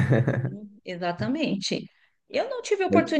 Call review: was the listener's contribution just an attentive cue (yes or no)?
yes